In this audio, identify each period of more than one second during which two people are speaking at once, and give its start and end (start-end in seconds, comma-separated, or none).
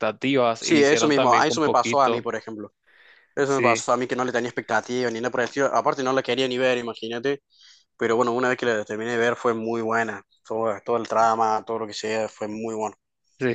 0.6-2.3